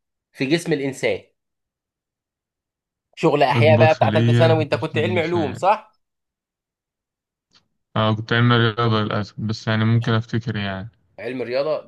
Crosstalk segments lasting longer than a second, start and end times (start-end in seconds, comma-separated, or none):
3.5-5.6